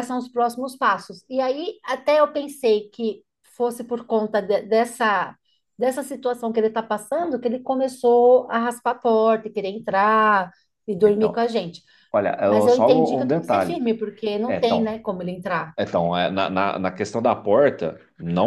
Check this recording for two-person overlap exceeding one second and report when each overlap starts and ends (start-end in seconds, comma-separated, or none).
12.5-13.8